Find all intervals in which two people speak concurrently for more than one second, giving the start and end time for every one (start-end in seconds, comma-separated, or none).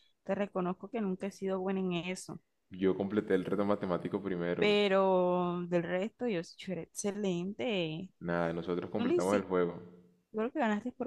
none